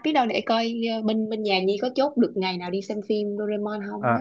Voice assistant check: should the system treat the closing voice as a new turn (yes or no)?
yes